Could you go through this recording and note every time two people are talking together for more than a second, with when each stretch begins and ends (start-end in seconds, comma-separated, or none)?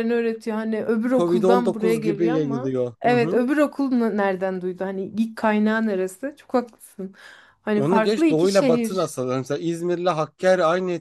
1.1-3.4, 7.8-9.1